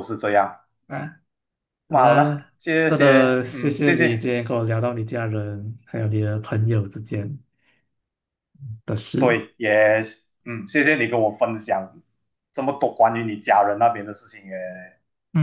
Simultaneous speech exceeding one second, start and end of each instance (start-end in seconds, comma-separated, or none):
1.9-4.3